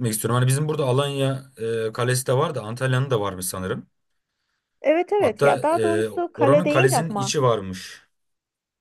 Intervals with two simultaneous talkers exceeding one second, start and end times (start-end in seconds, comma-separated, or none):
5.2-7.3